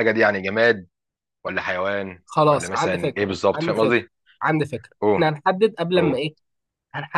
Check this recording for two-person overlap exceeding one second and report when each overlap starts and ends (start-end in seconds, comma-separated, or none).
2.2-4.0